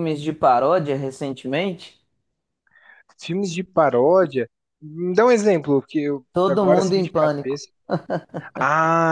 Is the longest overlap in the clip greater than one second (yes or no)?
yes